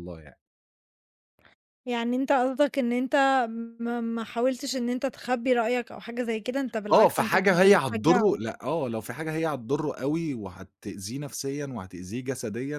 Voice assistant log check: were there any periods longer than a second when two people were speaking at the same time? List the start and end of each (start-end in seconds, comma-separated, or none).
6.9-8.4